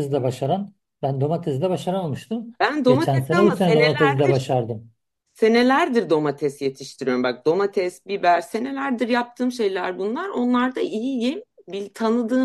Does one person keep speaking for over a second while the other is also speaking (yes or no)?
yes